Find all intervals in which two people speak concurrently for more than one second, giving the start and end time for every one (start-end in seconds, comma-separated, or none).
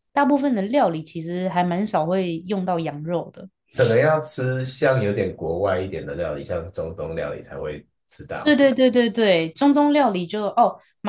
none